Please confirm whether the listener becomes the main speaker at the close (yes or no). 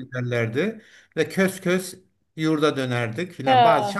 no